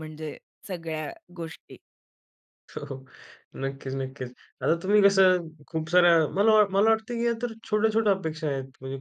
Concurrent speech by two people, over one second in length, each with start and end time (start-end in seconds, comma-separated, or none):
none